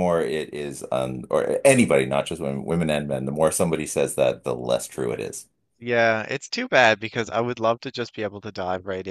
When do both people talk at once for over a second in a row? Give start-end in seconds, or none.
none